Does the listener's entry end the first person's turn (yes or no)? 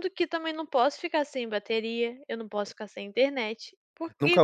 yes